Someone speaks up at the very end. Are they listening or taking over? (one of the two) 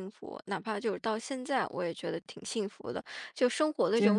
listening